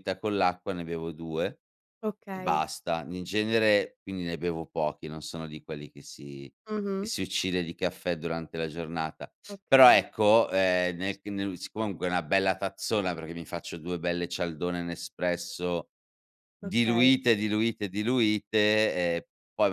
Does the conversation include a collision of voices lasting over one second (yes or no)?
no